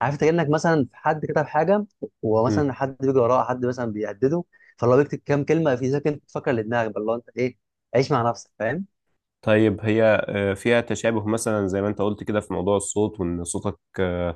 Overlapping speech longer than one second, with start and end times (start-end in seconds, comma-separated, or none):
none